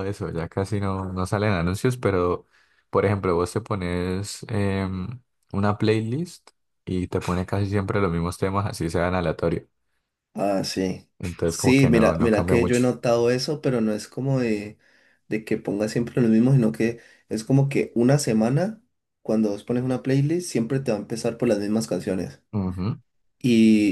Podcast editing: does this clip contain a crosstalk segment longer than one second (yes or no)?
yes